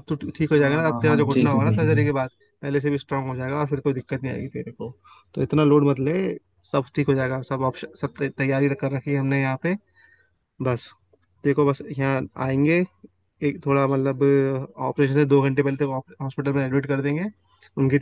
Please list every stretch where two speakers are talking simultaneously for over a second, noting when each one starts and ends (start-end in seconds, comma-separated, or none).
0.6-2.1